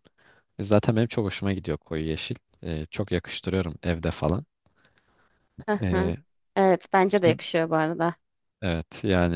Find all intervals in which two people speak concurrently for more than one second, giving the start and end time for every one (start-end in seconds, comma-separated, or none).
none